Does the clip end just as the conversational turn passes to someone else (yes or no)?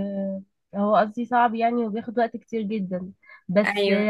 no